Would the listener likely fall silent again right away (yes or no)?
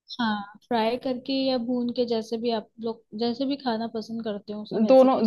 no